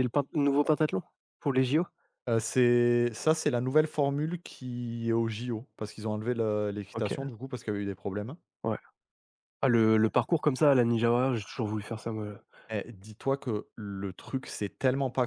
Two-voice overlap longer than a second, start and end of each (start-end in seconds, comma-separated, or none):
none